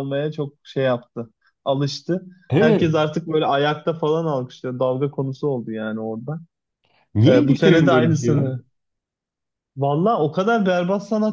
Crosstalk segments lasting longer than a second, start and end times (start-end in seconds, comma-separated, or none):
7.3-8.5